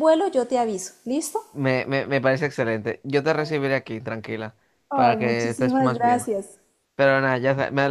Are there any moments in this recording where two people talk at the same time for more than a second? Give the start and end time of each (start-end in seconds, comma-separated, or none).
4.9-6.3